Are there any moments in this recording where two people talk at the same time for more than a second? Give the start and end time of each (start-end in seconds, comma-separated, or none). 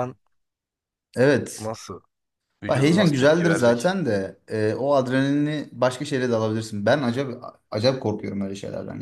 2.7-3.9